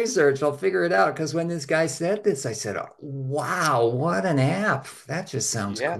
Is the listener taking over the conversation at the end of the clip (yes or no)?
yes